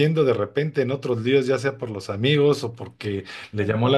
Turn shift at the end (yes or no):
no